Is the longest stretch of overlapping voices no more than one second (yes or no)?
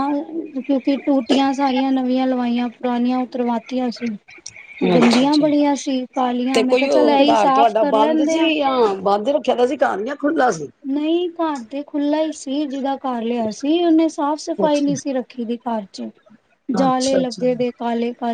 no